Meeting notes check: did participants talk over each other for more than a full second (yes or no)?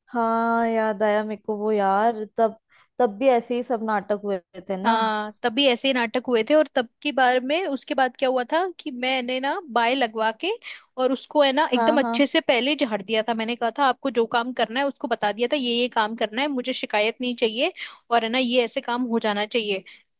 no